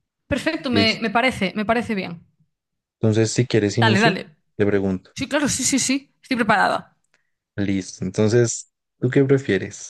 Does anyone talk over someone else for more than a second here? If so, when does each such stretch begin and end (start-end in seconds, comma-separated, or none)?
none